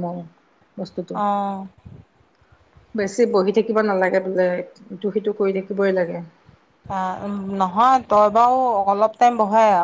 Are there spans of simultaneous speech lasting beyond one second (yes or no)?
no